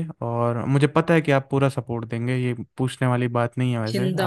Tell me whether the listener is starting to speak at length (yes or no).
yes